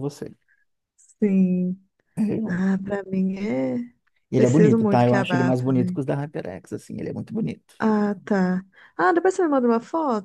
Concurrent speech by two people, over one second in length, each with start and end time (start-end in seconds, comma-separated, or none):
4.3-6.0